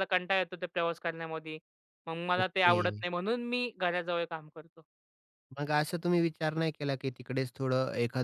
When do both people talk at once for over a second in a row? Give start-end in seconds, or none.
none